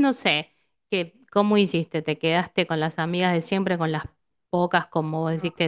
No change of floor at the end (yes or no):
yes